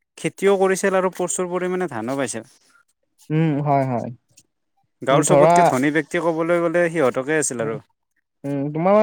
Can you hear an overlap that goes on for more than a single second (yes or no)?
no